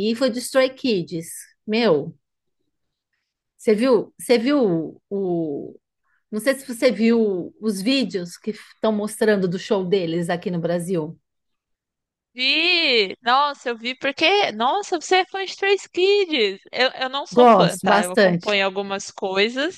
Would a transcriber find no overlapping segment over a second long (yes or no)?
no